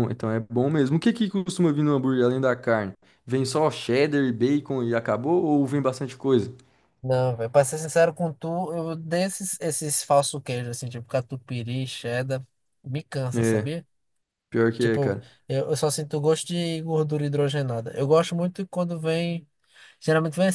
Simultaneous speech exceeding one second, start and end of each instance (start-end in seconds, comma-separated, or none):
none